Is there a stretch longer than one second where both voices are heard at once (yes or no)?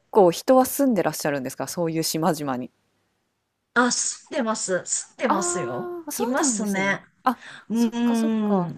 yes